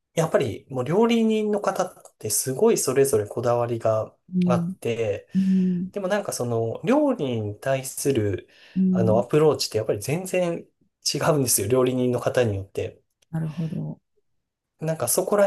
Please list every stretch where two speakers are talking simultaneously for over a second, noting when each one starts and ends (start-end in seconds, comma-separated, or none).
none